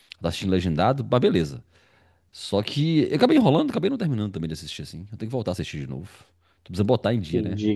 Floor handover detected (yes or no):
yes